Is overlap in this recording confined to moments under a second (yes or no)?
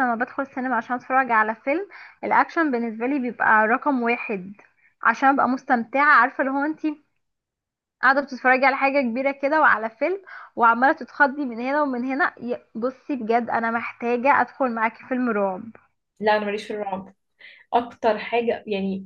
yes